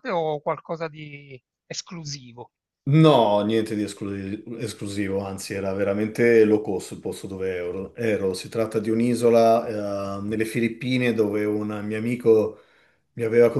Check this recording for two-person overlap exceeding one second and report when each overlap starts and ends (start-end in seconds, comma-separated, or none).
none